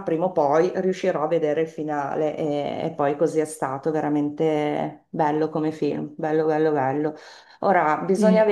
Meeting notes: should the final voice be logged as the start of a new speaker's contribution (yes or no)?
no